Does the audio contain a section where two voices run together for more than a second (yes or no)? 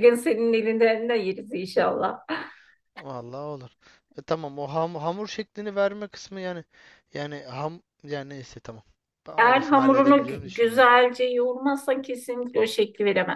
yes